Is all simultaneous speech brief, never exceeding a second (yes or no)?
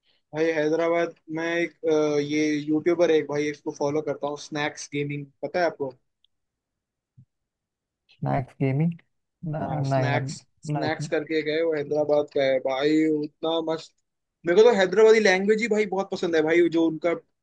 no